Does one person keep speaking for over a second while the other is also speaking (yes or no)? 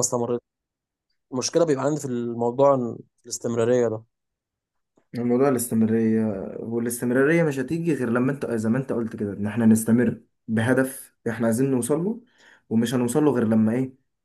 no